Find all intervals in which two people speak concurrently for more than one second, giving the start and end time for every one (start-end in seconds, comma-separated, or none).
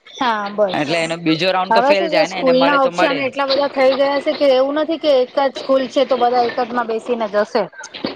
1.7-3.2